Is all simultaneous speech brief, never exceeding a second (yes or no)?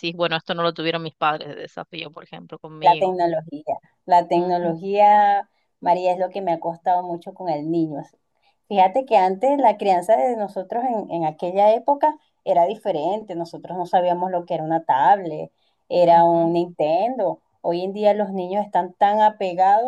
yes